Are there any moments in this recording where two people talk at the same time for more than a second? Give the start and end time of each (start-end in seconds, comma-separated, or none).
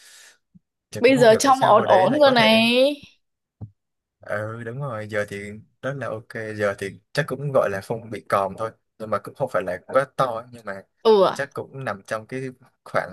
1.0-2.6